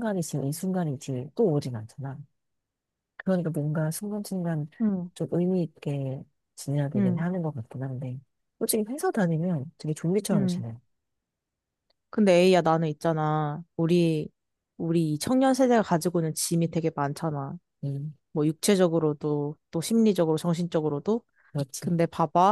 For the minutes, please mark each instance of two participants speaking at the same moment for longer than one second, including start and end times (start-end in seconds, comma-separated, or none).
none